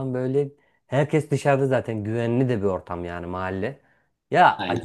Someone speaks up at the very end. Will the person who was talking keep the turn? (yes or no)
yes